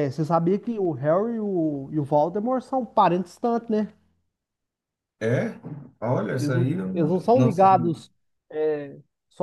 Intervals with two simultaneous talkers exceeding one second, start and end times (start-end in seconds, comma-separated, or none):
6.4-7.9